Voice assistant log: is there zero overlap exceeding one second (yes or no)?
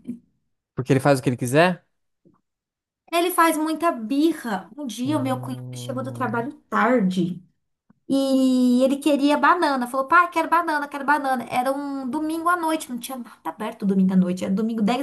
no